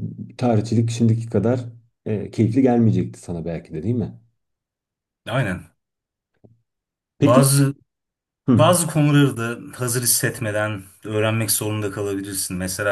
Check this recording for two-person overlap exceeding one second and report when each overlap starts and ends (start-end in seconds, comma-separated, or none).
none